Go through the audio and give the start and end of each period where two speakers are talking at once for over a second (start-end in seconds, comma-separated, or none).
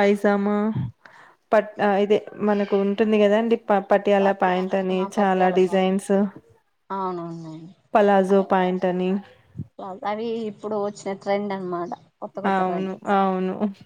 4.2-6.0